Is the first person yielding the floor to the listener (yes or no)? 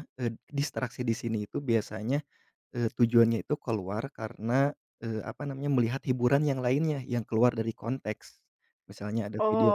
yes